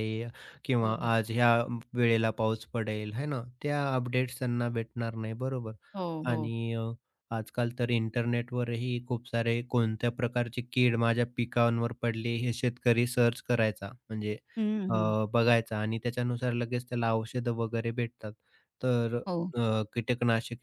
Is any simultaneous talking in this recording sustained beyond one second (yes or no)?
no